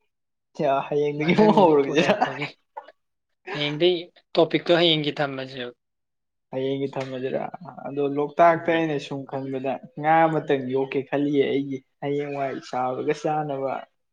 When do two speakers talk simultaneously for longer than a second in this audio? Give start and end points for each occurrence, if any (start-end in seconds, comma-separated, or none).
1.2-2.4